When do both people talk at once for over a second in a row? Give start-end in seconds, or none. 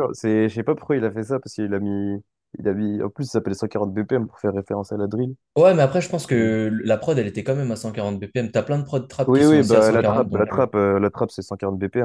9.3-10.7